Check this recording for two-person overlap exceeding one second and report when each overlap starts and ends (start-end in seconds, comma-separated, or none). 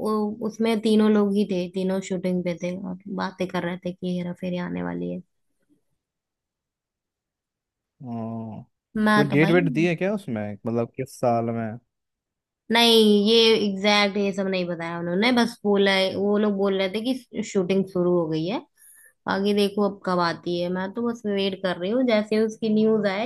none